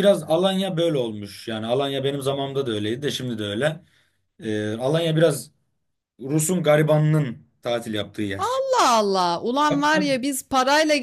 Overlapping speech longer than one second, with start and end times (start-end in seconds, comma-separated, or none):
none